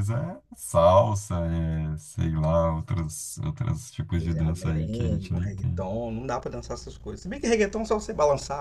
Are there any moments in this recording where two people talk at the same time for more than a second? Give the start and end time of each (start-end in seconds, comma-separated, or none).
4.2-5.9